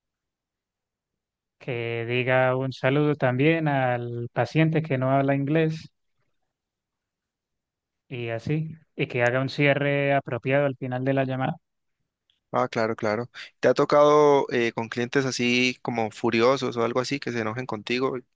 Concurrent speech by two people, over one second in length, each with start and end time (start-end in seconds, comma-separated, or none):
none